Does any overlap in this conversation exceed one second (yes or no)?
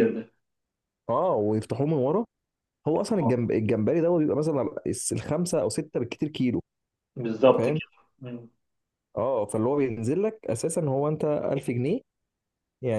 no